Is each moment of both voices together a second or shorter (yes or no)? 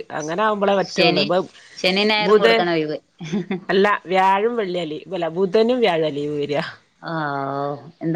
yes